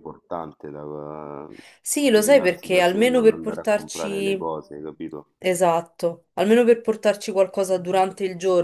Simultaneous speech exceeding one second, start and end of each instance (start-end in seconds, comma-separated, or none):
2.0-4.5